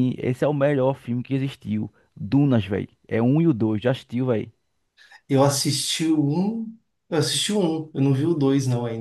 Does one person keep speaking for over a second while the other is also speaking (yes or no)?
no